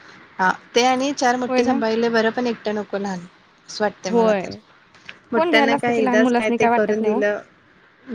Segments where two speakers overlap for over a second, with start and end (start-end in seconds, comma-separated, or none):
5.3-7.2